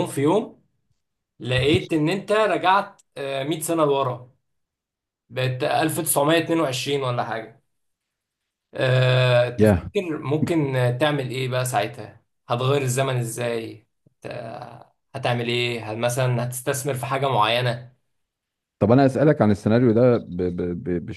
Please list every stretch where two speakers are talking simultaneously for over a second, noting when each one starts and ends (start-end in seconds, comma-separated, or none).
none